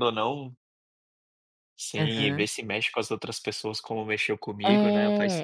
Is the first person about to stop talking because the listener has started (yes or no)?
yes